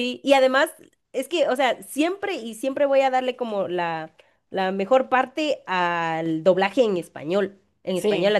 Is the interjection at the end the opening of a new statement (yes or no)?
no